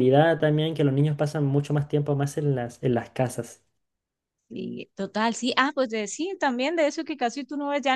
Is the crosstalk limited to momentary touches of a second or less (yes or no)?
yes